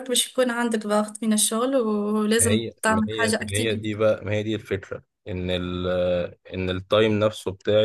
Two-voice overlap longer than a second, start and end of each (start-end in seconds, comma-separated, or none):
2.4-4.0